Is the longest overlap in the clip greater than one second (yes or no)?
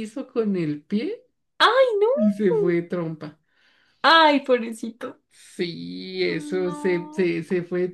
yes